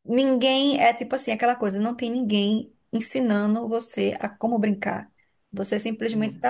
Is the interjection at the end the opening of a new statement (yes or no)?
no